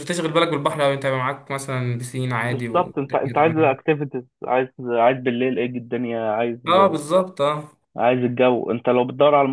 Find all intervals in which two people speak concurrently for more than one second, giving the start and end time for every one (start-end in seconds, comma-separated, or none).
2.5-3.8